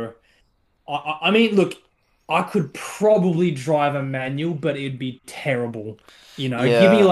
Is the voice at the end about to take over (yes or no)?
no